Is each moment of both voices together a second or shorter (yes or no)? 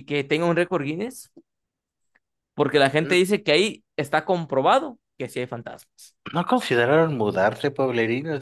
yes